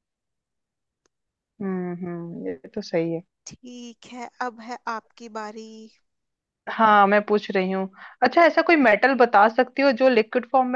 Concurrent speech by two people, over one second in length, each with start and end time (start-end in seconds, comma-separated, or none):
none